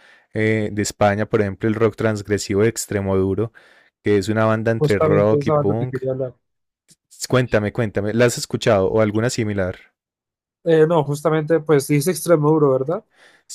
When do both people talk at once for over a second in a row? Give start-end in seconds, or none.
4.8-6.0